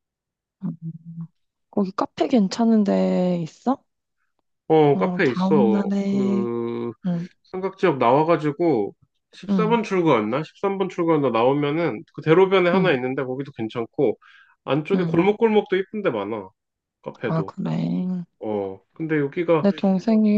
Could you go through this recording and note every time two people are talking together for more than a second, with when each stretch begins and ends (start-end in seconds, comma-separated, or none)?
4.9-6.5